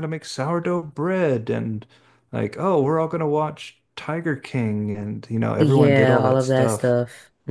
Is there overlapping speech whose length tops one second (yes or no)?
yes